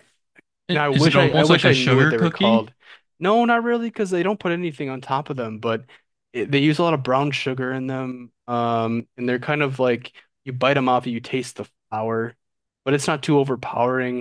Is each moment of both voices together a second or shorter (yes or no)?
no